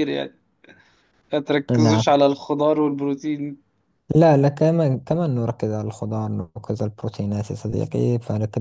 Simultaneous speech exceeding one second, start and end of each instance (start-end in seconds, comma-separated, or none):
none